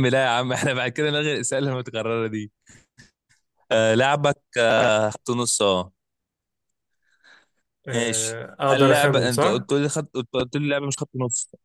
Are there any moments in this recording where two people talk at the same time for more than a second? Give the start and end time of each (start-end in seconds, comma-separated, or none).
7.9-9.6